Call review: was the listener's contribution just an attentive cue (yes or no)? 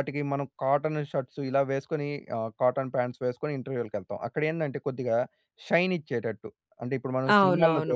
no